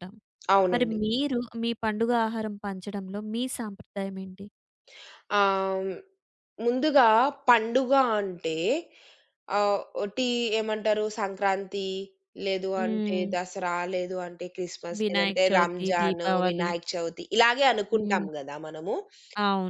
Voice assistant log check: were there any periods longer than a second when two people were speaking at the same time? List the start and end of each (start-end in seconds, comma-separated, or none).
15.0-16.7